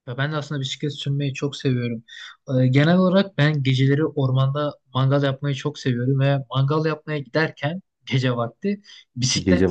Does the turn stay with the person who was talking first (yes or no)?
yes